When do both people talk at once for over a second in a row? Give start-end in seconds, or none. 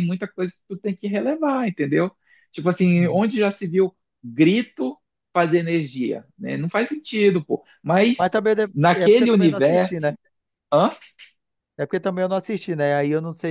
8.2-10.1